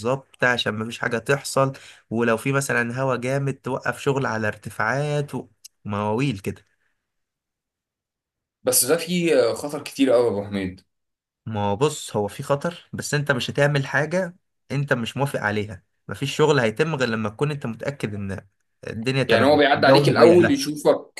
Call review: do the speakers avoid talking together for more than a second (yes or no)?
no